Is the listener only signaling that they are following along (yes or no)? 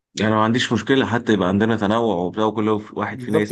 no